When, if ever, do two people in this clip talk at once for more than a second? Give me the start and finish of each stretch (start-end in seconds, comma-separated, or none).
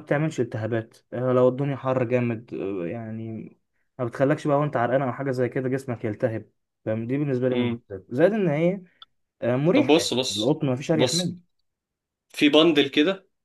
9.7-11.3